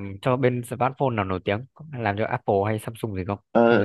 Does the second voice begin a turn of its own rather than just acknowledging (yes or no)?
yes